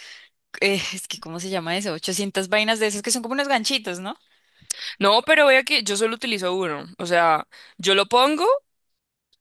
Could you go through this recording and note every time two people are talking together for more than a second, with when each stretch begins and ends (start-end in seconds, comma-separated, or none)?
none